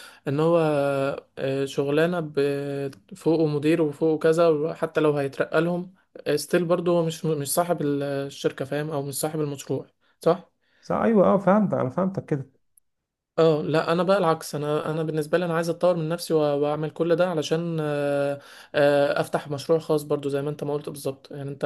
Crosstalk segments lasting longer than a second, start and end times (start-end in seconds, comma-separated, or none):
none